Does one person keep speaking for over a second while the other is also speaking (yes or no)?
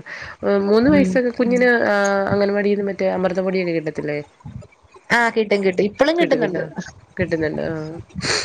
no